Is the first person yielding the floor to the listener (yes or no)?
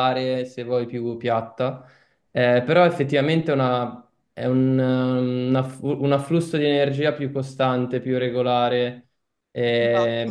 no